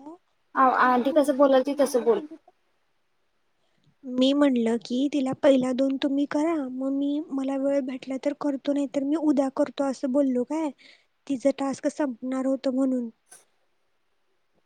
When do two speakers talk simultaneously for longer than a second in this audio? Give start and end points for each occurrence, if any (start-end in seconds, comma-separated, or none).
0.8-2.2